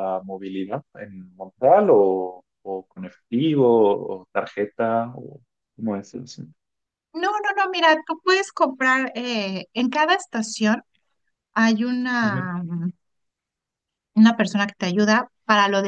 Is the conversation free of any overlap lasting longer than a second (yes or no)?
yes